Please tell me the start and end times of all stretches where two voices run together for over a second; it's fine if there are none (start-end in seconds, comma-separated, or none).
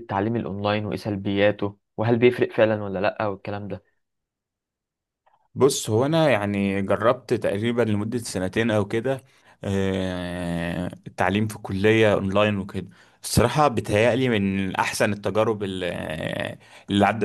none